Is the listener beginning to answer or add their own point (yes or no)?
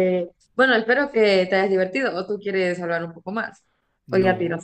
yes